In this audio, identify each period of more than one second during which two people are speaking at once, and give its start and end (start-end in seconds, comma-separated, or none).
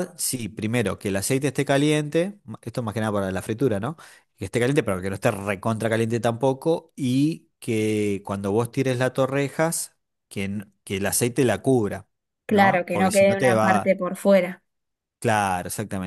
12.5-13.9